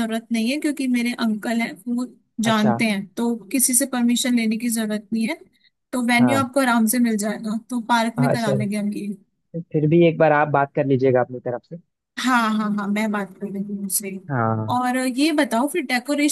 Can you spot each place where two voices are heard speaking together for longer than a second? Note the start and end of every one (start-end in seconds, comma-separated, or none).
none